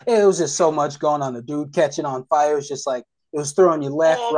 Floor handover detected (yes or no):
yes